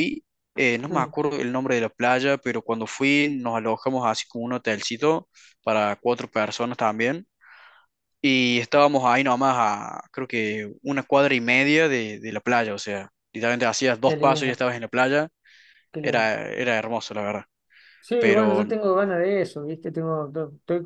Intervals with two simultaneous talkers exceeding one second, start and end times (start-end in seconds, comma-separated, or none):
none